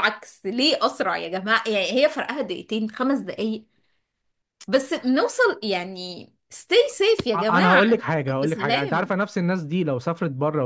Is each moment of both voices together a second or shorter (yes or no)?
no